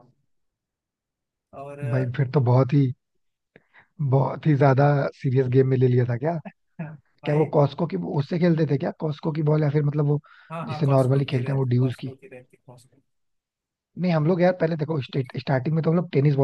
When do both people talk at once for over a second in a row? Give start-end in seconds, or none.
10.6-12.1